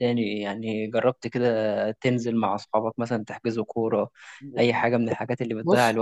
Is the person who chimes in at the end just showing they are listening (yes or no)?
no